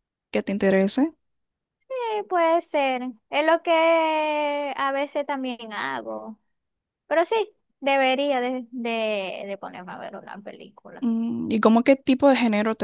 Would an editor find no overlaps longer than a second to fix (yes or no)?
yes